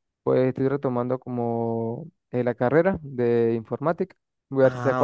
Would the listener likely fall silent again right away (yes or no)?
yes